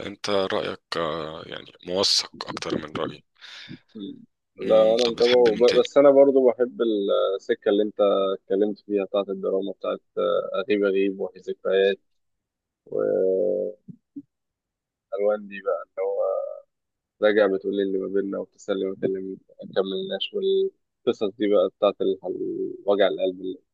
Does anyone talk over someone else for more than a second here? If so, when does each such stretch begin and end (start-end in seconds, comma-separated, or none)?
4.6-5.9